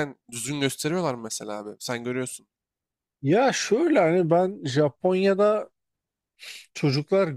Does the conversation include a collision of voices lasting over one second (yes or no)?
no